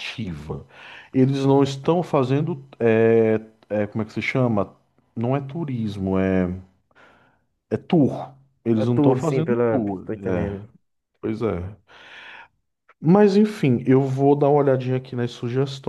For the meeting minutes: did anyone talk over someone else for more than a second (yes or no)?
yes